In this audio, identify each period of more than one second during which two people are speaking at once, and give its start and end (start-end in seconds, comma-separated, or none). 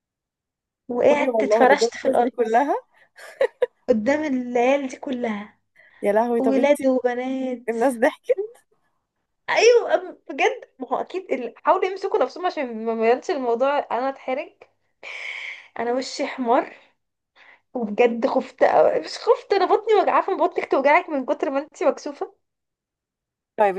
1.1-2.3